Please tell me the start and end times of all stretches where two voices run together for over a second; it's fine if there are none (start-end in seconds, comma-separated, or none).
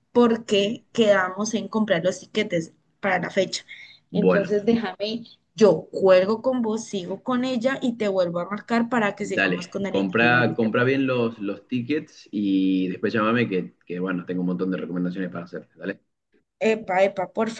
9.2-11.0